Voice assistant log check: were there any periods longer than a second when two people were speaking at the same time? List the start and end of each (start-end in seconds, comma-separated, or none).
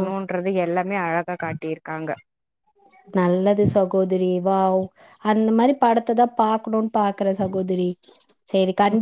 none